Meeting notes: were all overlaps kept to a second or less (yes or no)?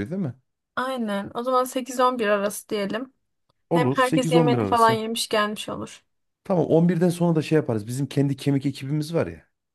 no